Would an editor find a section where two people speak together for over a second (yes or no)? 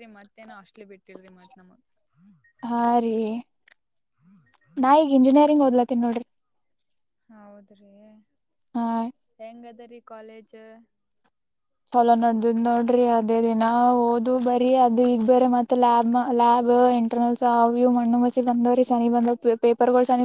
no